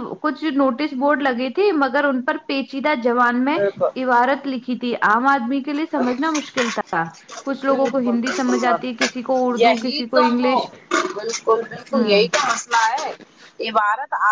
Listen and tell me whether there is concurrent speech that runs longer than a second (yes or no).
yes